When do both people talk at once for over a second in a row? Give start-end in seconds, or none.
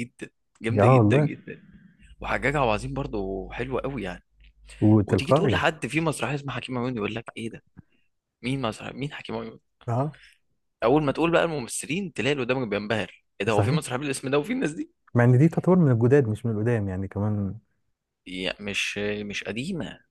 none